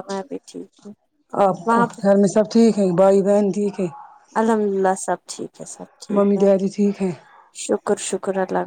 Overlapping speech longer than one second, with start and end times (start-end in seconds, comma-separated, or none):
none